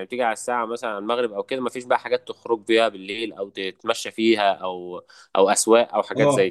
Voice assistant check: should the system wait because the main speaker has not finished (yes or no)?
no